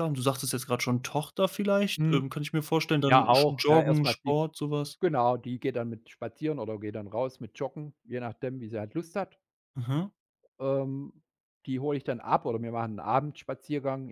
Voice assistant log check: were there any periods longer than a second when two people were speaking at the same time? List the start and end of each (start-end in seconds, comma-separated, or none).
3.1-4.4